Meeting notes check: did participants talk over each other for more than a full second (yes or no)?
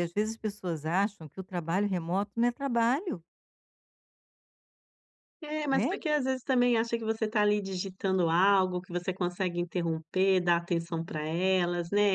no